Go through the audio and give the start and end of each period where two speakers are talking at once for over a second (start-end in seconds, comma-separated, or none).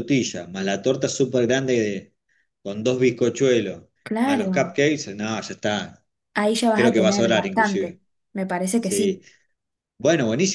6.7-8.0